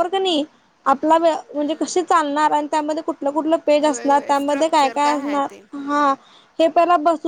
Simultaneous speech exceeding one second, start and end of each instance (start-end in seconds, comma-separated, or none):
3.9-6.1